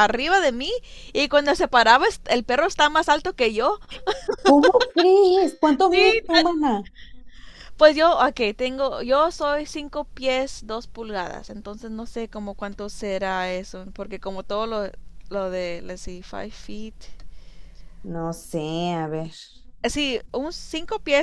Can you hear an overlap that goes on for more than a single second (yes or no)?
no